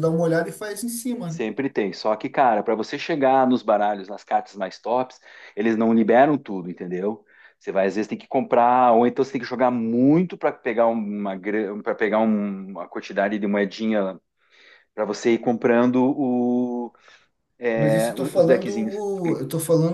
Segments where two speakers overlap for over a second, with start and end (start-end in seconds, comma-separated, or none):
17.7-19.0